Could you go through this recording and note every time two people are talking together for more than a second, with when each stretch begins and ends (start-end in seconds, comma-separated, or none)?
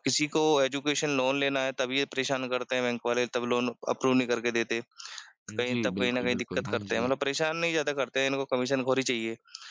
5.6-7.1